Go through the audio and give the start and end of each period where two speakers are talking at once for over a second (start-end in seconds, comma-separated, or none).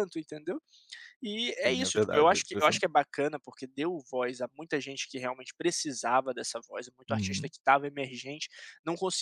1.4-2.9